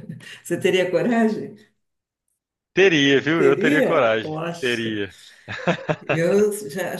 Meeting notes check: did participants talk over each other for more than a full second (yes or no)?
yes